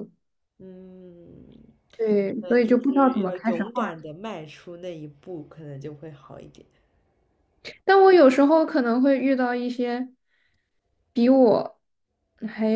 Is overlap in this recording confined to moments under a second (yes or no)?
no